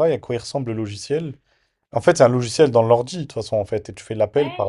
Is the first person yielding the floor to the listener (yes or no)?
yes